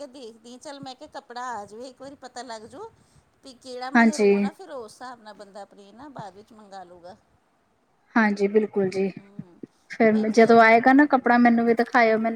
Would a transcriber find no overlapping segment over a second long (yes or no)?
yes